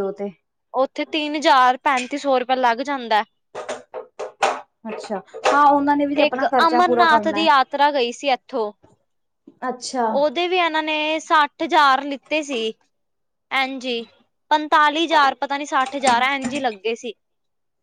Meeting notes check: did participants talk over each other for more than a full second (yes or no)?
yes